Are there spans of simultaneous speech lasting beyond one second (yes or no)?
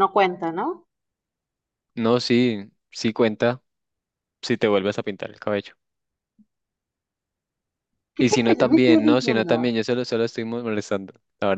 yes